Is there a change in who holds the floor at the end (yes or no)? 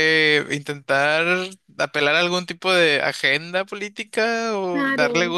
no